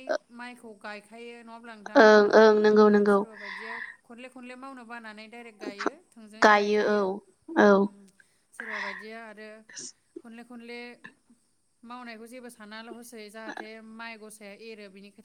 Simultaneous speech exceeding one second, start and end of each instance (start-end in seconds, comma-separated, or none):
none